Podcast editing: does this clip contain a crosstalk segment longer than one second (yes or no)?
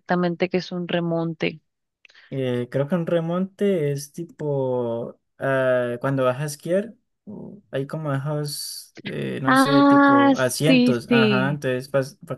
yes